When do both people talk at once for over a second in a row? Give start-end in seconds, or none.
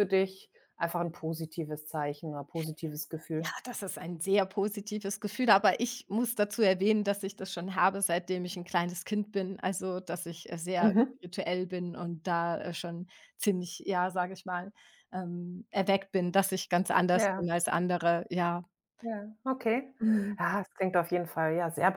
none